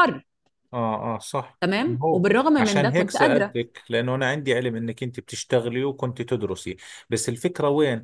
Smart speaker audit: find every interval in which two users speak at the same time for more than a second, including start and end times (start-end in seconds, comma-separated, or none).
1.6-3.5